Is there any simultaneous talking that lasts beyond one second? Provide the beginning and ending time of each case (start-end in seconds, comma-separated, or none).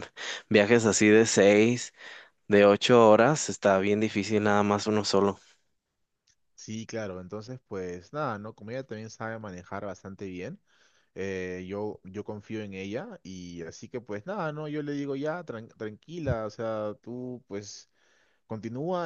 none